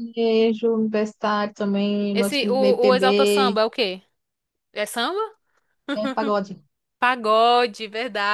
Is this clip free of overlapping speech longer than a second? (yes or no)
no